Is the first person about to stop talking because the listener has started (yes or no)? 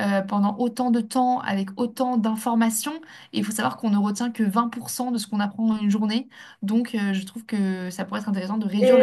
yes